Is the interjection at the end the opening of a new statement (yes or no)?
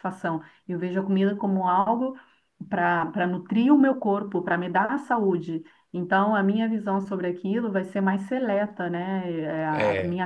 no